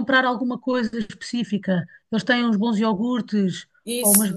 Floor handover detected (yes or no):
no